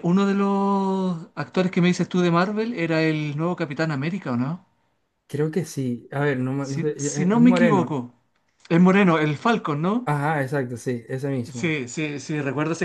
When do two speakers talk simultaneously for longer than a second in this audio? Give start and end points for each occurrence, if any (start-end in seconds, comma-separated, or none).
6.6-8.0